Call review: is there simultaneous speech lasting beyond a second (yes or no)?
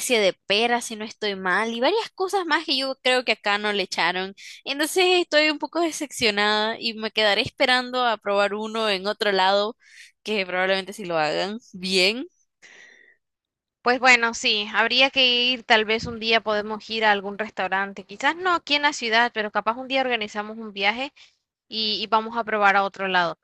no